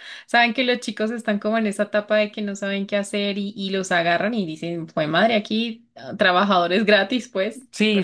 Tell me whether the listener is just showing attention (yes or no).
no